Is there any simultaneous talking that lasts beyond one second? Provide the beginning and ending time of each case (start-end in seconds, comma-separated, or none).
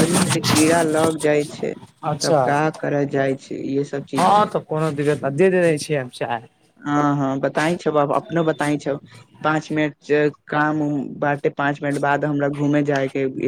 none